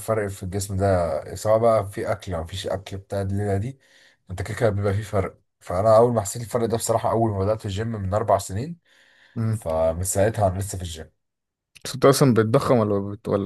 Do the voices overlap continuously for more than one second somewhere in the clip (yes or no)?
no